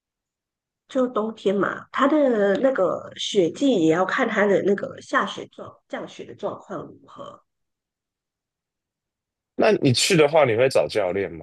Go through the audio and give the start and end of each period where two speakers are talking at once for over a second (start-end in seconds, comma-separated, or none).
none